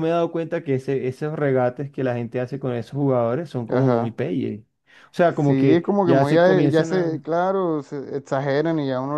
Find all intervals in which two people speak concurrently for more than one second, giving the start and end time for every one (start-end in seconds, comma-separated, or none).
5.3-7.2